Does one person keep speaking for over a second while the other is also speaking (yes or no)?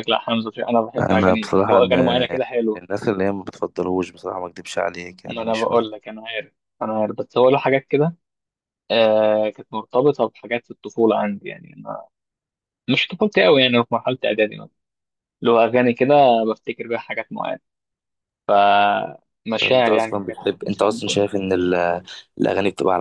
yes